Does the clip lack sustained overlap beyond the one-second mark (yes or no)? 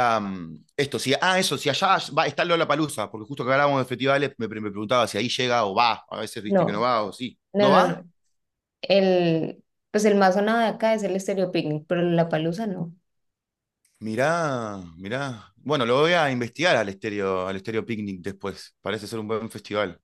yes